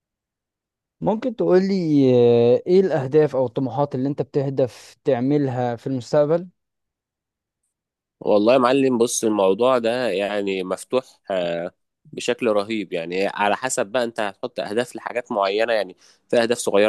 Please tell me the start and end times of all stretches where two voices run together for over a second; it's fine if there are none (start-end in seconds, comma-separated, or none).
none